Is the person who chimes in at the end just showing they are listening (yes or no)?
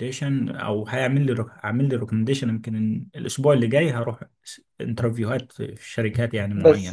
no